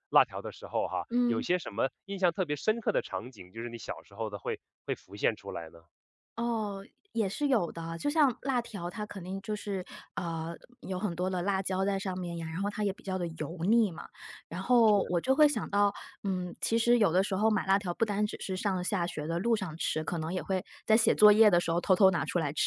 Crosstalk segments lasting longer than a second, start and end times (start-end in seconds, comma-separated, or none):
none